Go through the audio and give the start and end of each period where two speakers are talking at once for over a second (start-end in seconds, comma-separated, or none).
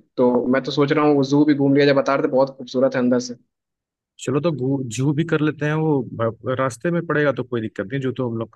none